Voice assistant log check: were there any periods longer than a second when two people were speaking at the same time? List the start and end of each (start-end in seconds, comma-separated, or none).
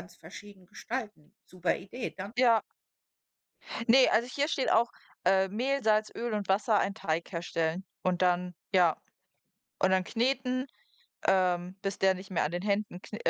none